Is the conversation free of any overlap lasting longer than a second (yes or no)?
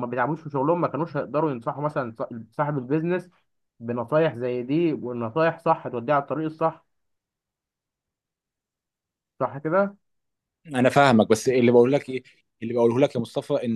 yes